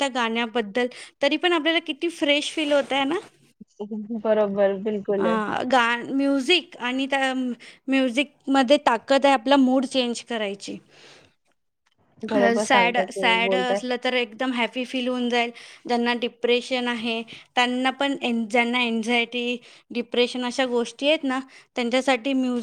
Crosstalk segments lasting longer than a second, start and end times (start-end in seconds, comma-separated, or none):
12.3-13.8